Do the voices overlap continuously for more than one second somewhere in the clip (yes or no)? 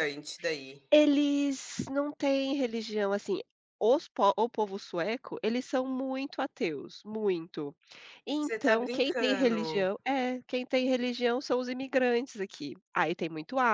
yes